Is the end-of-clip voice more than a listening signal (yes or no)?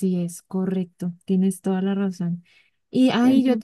no